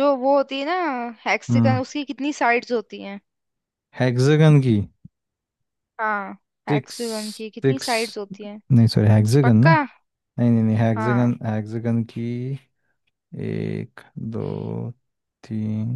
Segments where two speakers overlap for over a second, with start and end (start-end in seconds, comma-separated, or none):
none